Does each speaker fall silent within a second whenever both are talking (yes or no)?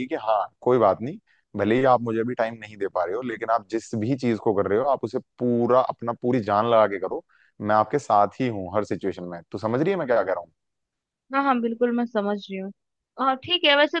yes